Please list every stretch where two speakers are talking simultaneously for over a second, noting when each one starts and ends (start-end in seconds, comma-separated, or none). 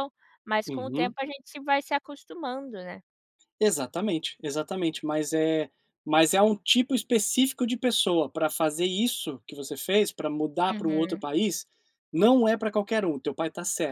none